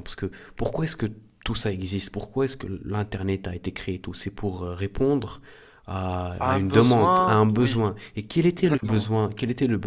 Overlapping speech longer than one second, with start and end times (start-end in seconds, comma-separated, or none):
6.4-7.9